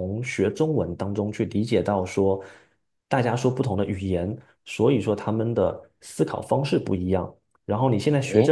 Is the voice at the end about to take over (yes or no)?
yes